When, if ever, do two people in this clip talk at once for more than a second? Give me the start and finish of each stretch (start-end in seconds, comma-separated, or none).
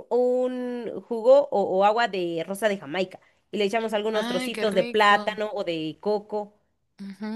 4.1-5.4